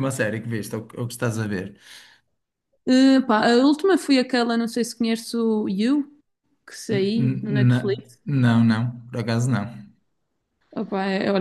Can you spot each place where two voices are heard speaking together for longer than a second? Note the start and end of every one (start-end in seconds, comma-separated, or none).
6.9-8.2